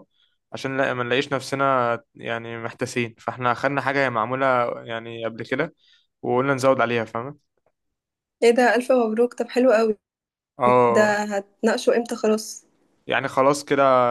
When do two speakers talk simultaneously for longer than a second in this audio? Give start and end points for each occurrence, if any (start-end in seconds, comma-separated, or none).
none